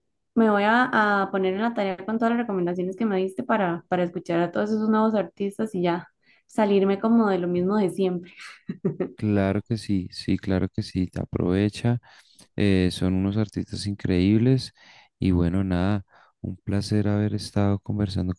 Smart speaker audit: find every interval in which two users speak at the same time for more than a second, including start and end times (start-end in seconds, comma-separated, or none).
none